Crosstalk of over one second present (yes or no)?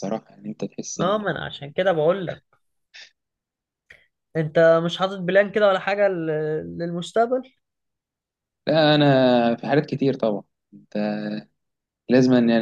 no